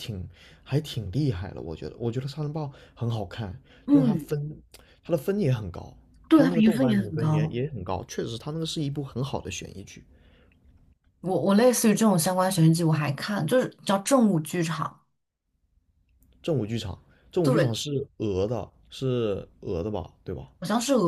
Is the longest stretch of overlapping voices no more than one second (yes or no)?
no